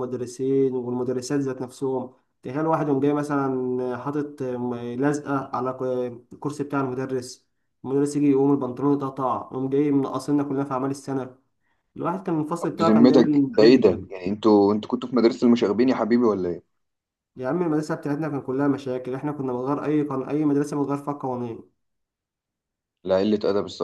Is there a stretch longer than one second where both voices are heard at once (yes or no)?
yes